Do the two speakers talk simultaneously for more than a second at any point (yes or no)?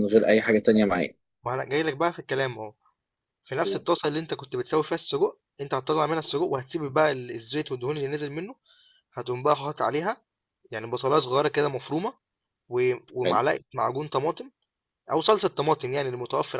no